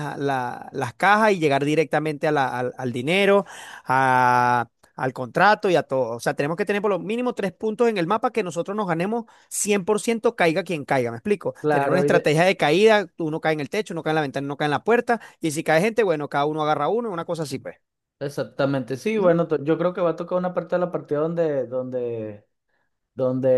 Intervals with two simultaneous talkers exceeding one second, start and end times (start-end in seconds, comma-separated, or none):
none